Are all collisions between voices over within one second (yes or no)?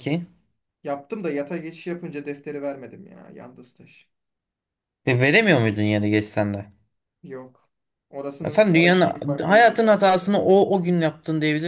no